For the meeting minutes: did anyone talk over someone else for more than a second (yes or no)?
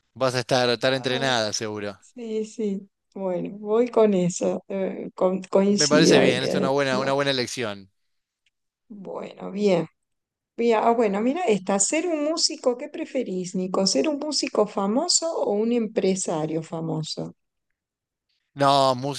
yes